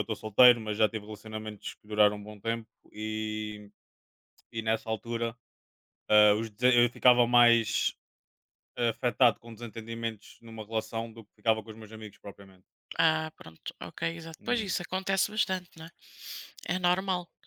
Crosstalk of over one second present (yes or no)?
no